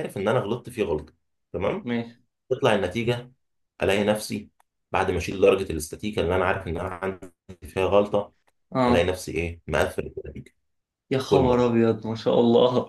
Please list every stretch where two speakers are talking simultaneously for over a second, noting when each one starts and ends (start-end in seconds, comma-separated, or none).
none